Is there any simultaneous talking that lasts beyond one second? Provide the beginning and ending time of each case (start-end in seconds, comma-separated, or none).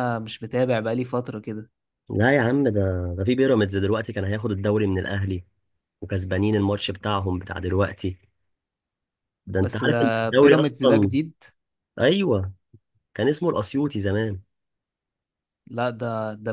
9.6-11.1